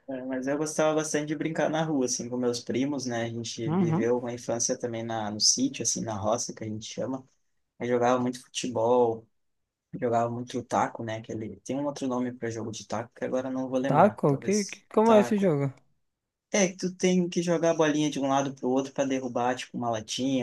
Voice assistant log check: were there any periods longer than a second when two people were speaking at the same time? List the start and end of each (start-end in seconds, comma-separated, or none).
13.9-15.5